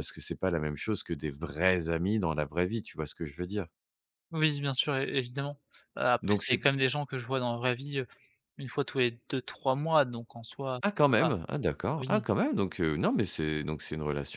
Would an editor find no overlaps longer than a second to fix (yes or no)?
yes